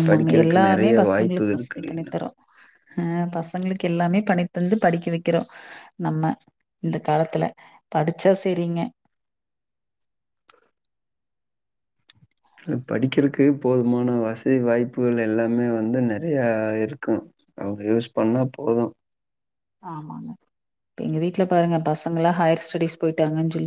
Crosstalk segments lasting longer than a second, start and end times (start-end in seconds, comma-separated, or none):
0.7-2.0